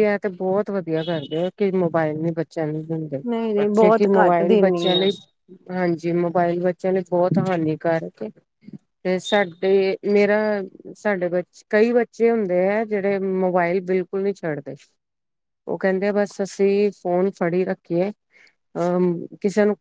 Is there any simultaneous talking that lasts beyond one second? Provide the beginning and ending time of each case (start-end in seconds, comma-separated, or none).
3.6-5.1